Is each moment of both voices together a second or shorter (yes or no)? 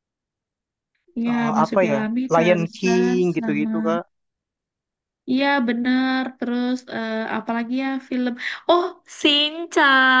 no